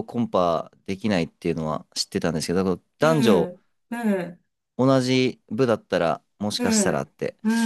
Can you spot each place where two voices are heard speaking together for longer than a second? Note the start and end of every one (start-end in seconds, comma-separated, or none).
none